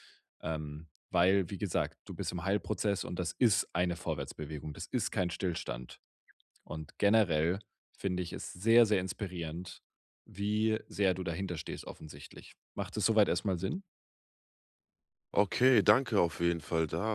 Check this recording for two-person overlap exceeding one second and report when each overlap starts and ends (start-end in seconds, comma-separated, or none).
none